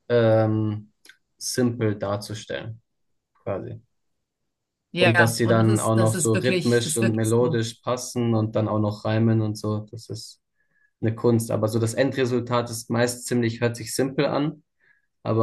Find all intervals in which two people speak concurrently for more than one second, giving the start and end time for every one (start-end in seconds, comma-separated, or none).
5.0-7.6